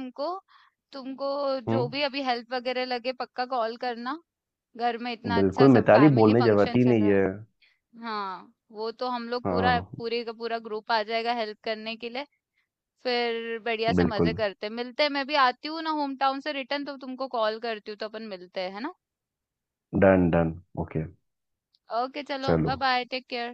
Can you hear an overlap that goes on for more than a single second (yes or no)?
yes